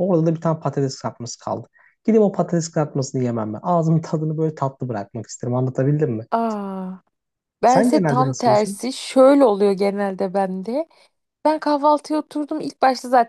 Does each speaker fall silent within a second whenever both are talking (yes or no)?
no